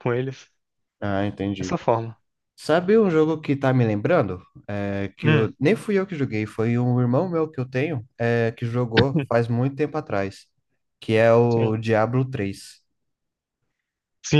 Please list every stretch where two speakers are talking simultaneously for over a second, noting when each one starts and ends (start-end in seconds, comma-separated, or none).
none